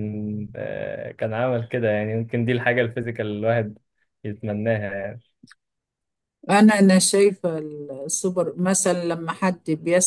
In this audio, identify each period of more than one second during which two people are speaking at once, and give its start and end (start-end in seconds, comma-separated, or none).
none